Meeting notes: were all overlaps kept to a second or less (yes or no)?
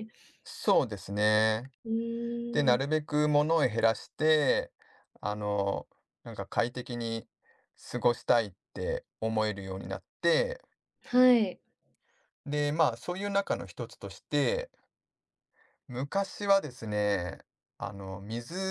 yes